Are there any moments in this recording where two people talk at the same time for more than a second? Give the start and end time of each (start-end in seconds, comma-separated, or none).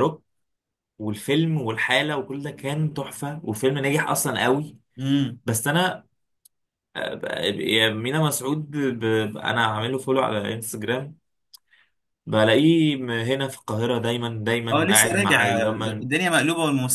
14.7-16.1